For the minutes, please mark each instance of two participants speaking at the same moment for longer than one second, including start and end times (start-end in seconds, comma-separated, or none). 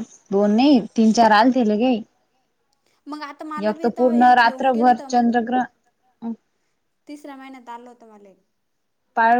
3.7-5.7